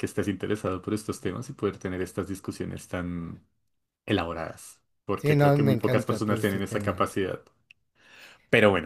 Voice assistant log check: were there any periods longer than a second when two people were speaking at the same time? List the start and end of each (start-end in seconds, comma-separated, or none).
5.2-7.1